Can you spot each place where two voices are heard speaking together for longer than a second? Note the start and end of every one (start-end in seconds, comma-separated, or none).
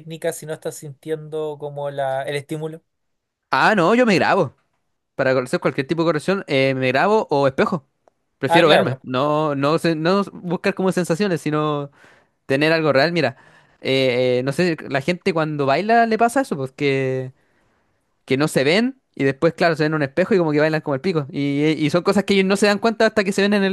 none